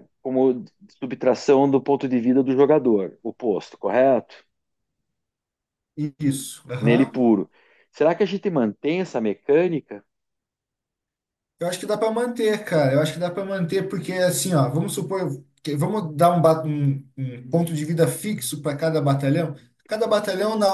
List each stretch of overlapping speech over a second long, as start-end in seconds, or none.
none